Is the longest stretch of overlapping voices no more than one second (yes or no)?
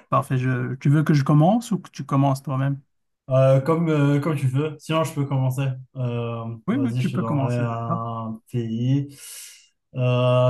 no